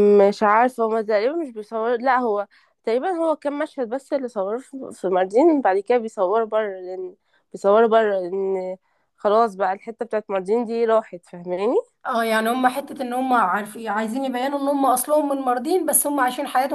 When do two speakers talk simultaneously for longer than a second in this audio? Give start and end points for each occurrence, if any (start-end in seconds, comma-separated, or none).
none